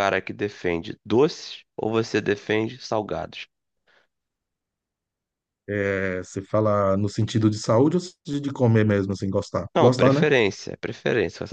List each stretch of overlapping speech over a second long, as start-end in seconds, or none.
none